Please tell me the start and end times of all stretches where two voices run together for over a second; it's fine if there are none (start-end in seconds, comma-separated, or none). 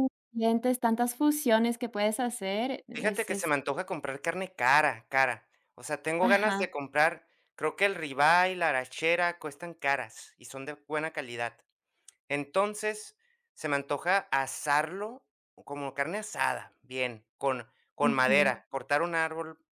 none